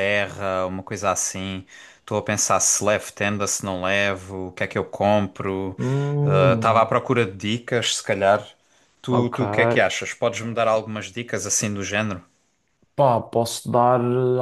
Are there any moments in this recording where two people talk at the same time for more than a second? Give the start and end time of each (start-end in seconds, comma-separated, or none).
none